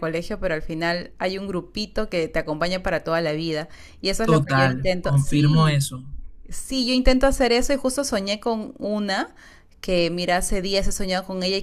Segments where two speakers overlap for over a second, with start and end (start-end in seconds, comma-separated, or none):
4.2-5.8